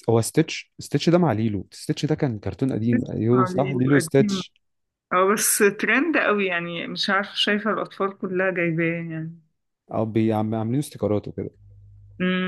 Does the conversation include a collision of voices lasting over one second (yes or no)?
yes